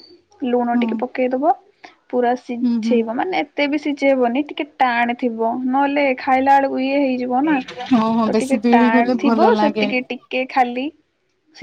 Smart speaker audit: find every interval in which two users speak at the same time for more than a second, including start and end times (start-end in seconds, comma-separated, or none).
8.3-10.0